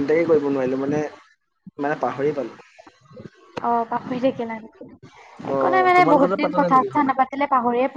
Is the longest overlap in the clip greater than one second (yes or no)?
yes